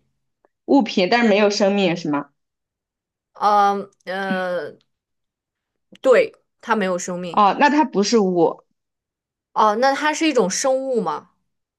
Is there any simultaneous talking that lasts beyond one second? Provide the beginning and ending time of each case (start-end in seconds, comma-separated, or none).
none